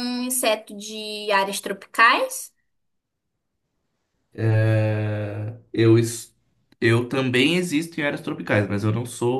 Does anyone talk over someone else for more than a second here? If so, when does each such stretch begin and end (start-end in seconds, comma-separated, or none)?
none